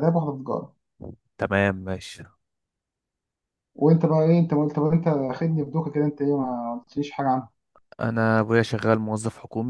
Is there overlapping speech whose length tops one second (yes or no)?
no